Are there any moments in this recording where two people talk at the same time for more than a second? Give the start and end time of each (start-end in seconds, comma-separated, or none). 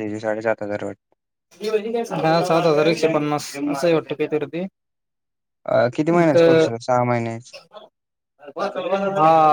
none